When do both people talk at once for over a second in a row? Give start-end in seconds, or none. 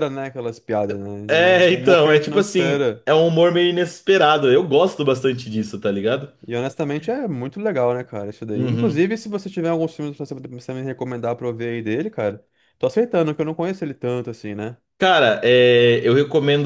1.7-3.0